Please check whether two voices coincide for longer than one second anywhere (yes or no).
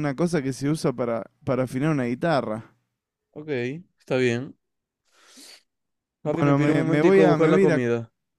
yes